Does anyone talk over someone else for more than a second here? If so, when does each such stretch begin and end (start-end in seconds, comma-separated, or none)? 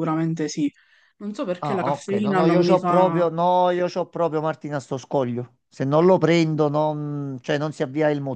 1.6-3.2